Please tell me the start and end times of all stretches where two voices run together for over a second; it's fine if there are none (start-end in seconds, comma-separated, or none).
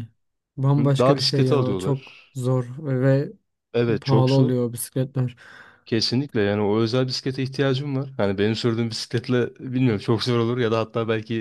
0.8-2.2